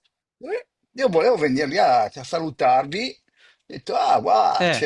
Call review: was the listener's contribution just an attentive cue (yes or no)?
yes